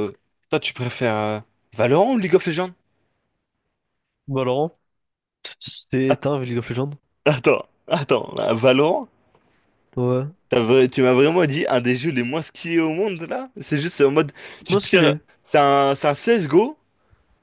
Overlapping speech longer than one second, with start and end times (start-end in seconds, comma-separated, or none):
none